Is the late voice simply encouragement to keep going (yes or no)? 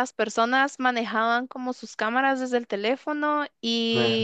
yes